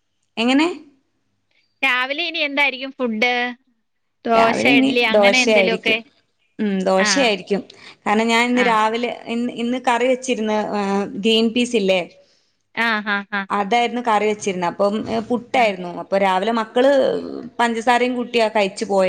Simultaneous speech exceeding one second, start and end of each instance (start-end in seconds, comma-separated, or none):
4.3-5.9